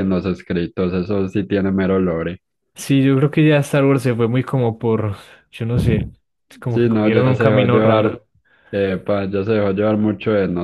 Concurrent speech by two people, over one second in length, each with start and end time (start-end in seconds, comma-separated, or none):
6.7-8.2